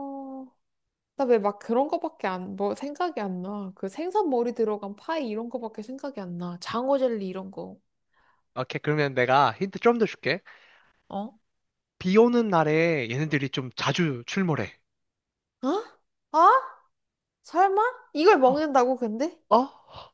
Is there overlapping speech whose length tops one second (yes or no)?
no